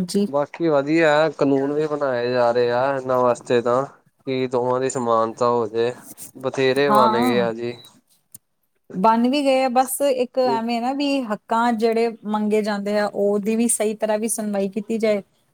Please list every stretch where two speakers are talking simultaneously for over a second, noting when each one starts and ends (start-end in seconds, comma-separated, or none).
none